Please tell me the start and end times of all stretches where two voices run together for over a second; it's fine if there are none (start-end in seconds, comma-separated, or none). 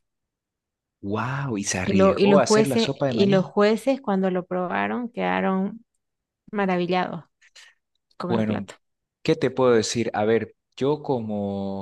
1.8-3.5